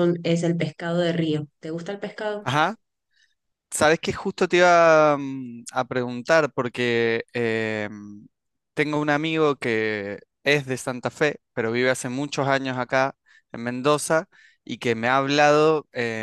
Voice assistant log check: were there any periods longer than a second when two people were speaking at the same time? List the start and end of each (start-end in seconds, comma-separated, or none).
none